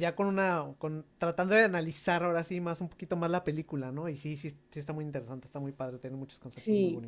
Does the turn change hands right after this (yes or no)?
yes